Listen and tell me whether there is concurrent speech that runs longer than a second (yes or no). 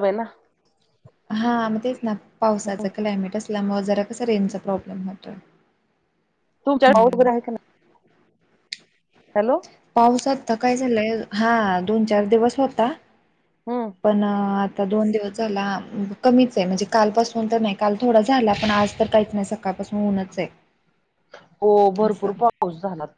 no